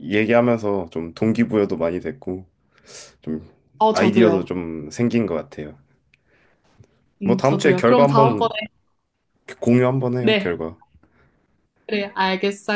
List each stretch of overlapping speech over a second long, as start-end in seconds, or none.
7.2-8.5